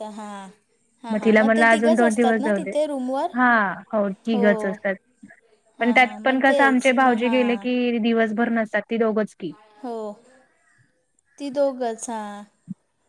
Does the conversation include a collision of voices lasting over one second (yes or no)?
yes